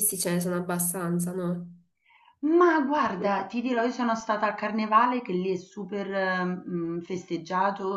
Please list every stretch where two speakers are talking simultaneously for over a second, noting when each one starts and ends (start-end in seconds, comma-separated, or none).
none